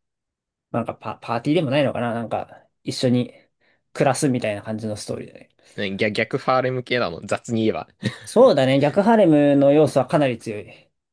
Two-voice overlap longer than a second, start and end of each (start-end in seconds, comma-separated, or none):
none